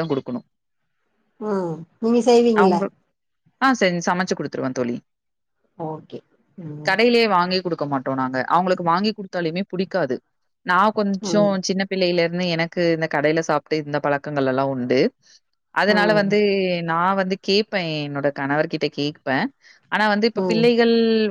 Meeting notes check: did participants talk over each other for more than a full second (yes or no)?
no